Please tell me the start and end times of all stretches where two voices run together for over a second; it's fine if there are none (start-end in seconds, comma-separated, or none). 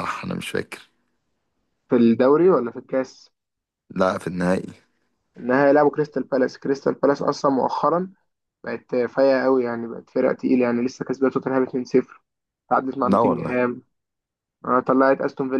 none